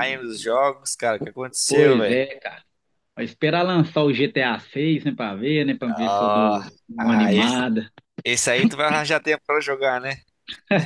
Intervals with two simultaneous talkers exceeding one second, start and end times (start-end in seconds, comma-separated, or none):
5.9-7.6